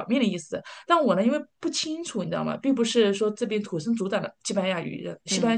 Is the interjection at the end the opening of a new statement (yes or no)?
no